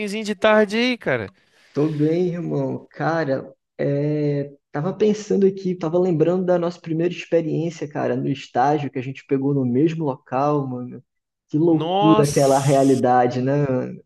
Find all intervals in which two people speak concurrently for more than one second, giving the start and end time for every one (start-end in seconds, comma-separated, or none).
11.7-13.0